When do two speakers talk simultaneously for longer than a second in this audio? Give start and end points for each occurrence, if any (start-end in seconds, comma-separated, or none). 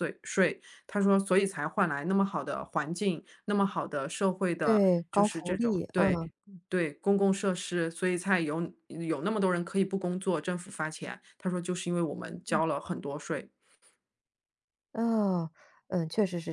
4.6-6.2